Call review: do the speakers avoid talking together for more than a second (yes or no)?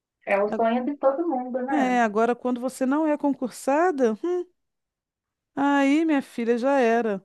yes